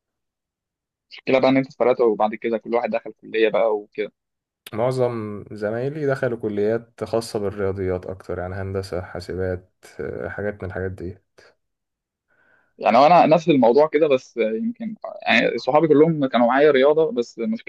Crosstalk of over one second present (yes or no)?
no